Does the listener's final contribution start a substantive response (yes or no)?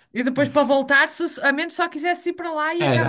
yes